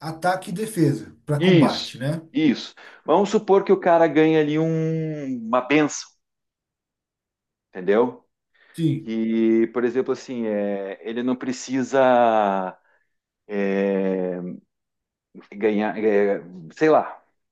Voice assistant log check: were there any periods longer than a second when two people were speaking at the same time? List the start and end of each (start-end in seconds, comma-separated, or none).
none